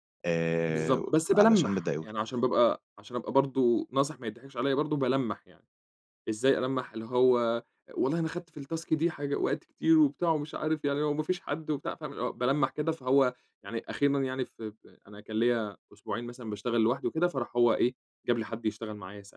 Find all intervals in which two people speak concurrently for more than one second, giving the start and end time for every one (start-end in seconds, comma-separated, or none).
0.7-2.1